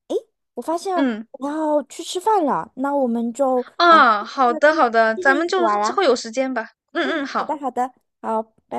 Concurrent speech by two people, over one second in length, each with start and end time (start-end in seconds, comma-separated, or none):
3.8-6.0